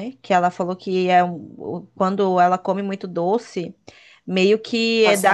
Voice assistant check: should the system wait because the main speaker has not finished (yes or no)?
yes